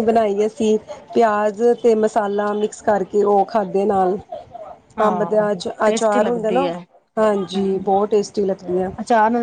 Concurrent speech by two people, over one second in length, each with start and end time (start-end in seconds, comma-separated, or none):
5.1-6.7